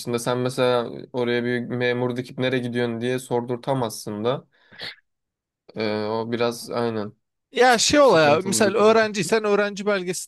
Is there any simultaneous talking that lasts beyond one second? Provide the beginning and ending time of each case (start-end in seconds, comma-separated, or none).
7.7-9.1